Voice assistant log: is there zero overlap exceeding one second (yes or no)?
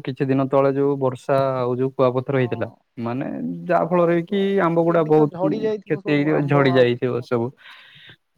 no